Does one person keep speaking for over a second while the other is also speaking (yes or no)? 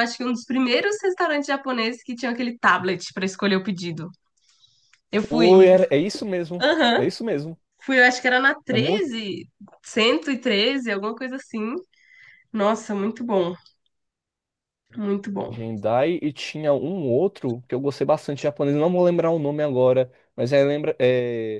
no